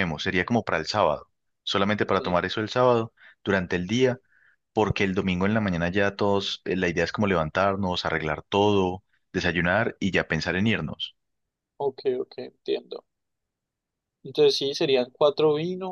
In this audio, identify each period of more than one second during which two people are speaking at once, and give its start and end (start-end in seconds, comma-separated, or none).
none